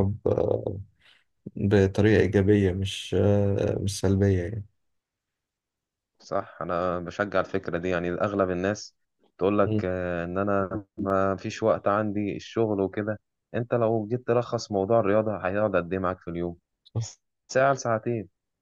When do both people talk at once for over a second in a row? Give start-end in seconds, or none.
none